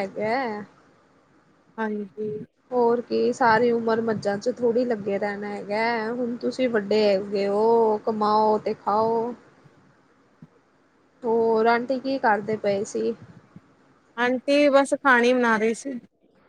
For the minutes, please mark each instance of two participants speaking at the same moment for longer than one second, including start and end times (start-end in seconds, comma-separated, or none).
none